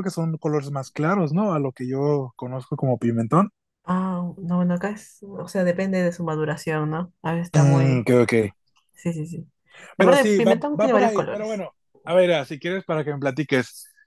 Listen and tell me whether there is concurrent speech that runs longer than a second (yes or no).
yes